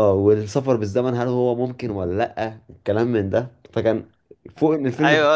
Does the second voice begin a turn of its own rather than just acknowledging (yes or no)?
yes